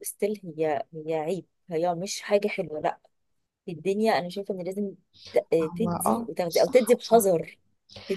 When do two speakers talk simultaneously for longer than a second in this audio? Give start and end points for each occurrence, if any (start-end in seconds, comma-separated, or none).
5.7-7.4